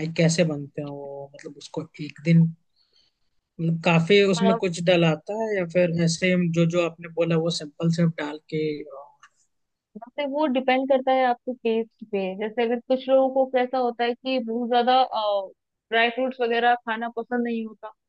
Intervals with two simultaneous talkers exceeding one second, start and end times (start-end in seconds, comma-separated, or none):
none